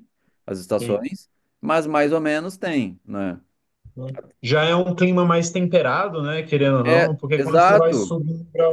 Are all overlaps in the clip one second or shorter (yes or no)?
no